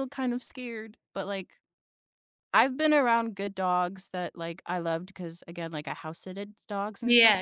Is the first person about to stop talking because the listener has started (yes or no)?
yes